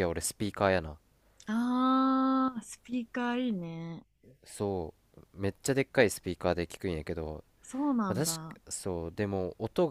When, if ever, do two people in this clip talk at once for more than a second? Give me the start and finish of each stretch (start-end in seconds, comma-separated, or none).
none